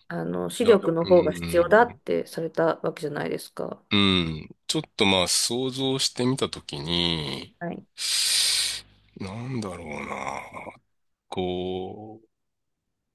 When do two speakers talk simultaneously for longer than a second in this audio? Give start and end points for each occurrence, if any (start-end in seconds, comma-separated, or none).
0.6-2.0